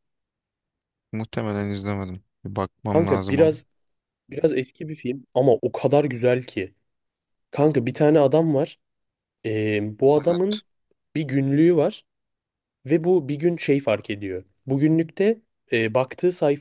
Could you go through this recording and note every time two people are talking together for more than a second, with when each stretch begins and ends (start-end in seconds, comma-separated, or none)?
none